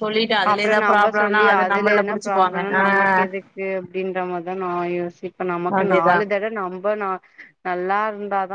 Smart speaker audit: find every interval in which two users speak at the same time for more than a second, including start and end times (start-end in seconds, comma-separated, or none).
0.5-2.8